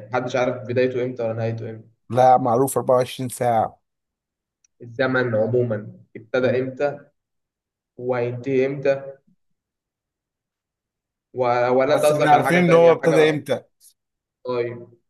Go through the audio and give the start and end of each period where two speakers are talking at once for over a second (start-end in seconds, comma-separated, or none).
11.9-13.4